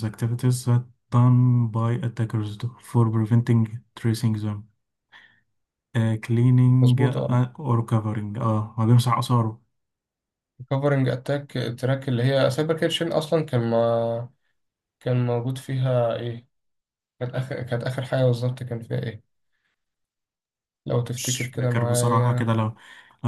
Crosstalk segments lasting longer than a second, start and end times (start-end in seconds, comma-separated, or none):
21.2-22.5